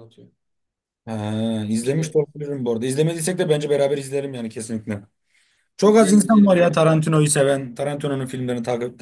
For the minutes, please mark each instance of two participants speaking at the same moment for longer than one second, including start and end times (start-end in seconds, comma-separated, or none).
5.8-7.0